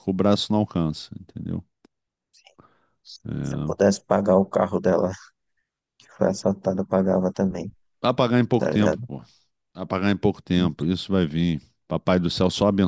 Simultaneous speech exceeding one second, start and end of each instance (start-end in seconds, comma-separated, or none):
none